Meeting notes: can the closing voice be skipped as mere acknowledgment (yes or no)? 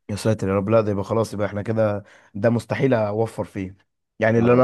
yes